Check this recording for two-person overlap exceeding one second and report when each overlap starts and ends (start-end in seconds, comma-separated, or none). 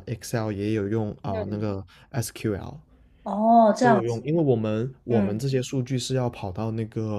none